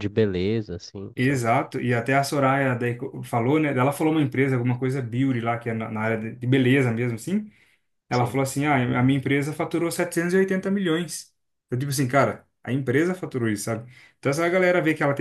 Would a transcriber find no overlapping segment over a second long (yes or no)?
yes